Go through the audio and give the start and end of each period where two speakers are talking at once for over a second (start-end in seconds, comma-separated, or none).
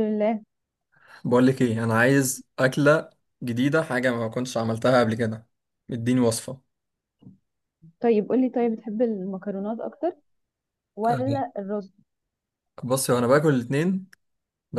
none